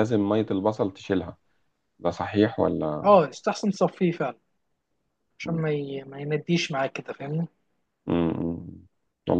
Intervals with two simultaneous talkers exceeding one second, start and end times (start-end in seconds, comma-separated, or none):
none